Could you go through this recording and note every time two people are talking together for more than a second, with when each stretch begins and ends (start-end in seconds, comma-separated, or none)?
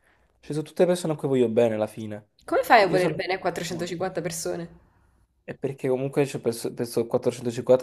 none